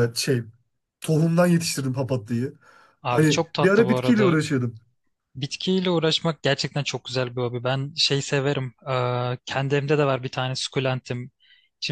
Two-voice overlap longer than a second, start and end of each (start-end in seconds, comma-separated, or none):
3.1-4.4